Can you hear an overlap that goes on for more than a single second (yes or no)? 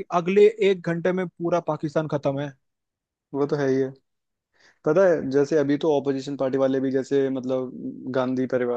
no